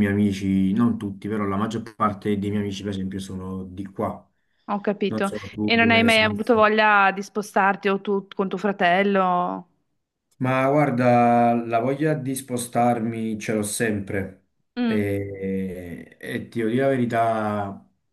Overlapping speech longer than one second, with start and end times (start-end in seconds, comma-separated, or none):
5.1-6.4